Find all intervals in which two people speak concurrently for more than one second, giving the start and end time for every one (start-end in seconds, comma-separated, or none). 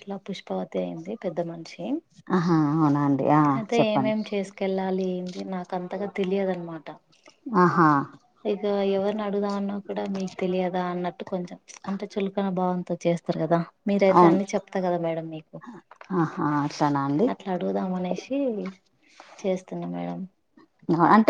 none